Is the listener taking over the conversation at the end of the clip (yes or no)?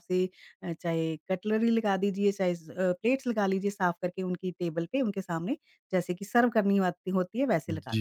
yes